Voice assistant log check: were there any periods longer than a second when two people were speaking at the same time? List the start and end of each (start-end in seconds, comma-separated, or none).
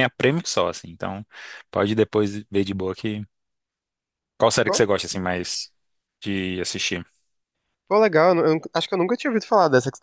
none